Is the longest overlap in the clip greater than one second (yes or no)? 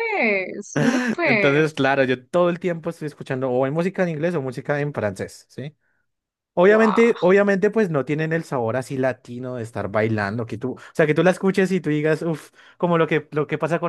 no